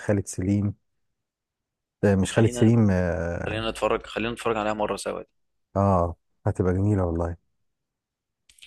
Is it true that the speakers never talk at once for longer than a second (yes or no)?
yes